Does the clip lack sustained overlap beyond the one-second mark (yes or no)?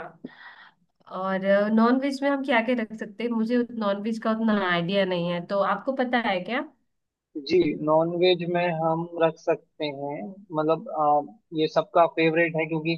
yes